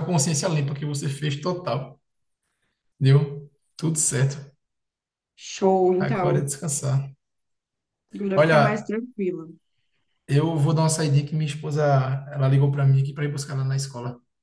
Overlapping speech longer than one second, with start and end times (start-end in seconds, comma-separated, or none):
none